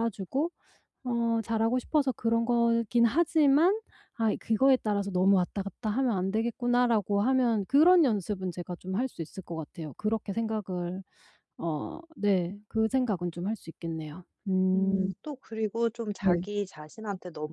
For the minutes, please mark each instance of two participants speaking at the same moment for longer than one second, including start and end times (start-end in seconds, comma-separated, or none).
none